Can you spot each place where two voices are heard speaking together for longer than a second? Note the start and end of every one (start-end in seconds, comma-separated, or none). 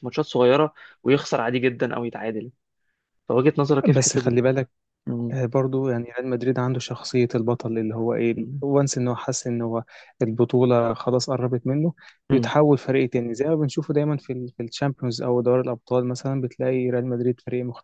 none